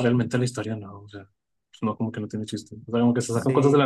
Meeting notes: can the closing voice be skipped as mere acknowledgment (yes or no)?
yes